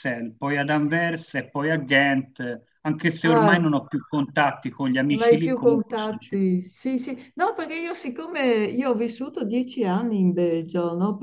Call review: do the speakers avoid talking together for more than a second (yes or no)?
no